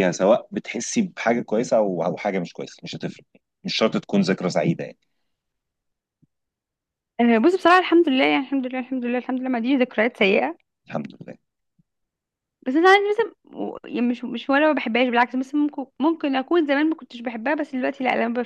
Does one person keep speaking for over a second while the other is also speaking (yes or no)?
no